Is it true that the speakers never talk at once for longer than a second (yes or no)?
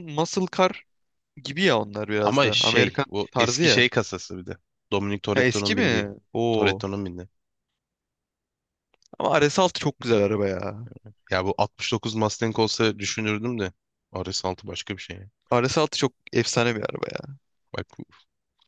no